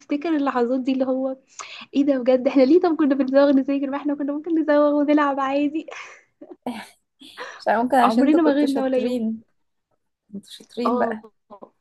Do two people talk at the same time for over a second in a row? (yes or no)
yes